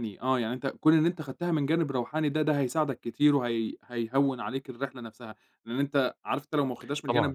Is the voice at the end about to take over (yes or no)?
no